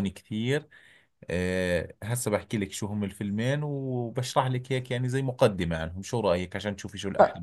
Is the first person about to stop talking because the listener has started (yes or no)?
yes